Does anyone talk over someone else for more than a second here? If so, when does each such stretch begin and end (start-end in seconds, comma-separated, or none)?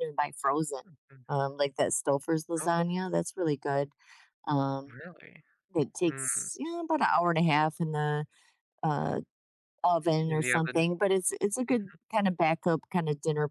none